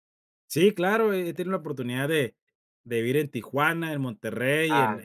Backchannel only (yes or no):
no